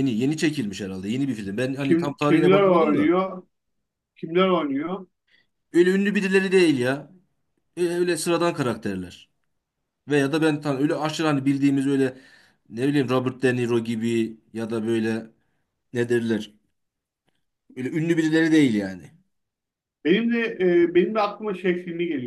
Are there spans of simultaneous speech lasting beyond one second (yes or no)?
yes